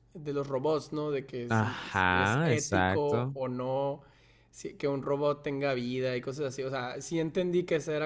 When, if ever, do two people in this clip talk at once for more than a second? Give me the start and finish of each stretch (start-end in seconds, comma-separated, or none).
1.5-3.4